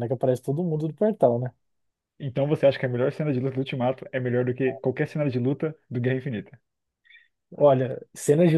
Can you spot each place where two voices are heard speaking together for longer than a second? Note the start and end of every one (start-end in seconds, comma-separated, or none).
none